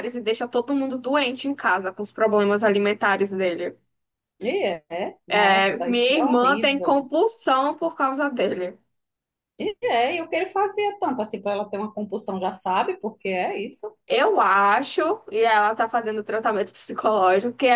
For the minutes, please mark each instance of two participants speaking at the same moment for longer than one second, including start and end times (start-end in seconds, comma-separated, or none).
5.4-7.1